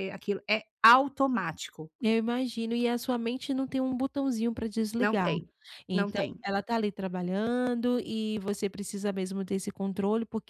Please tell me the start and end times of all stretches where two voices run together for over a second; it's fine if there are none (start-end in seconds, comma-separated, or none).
none